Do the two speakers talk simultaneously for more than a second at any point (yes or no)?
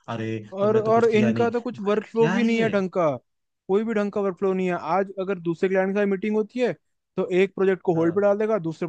yes